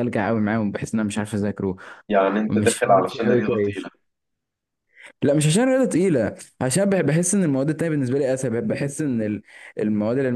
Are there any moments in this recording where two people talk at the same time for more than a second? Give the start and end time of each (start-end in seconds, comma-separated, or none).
2.5-3.9